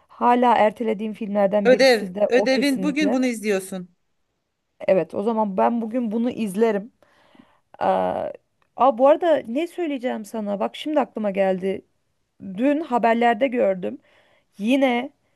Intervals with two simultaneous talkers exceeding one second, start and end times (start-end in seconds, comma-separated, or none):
1.6-3.2